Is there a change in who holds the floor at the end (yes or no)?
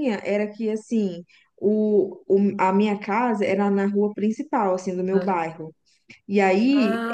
no